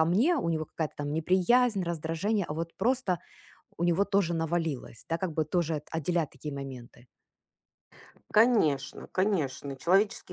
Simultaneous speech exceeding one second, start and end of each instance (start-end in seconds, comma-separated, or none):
none